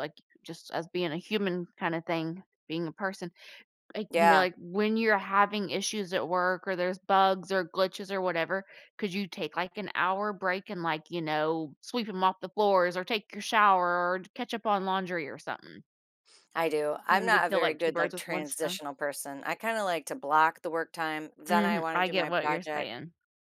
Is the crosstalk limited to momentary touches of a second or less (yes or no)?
no